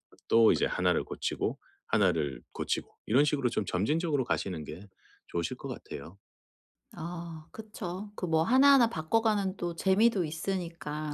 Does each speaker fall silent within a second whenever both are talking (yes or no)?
yes